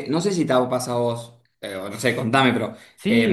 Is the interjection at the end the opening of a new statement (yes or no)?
yes